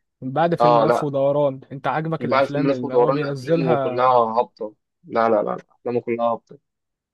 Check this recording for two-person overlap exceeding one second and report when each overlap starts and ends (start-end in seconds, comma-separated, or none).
2.2-4.2